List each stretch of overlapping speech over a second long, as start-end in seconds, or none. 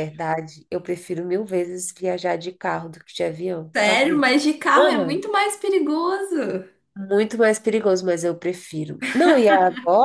none